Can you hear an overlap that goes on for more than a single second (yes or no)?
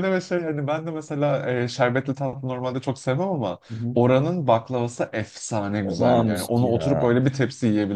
yes